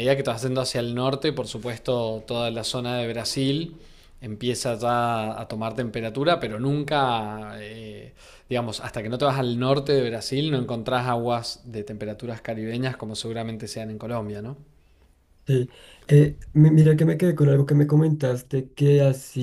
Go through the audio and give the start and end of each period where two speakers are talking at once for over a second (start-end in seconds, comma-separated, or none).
none